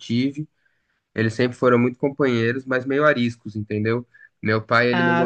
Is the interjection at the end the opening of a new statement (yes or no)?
no